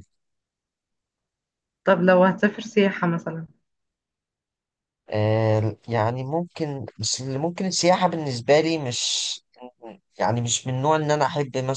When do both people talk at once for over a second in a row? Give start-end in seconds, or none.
none